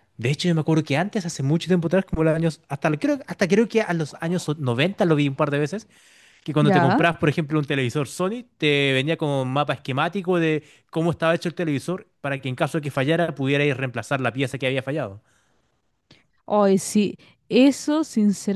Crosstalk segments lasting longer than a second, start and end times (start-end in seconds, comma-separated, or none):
none